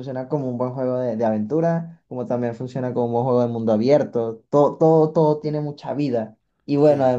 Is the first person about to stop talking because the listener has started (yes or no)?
no